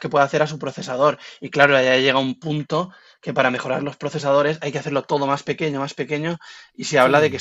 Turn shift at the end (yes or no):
no